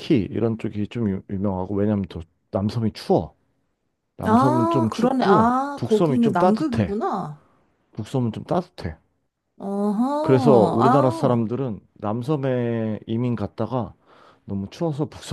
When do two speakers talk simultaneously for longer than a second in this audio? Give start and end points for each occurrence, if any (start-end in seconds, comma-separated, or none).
4.2-6.9, 10.2-11.4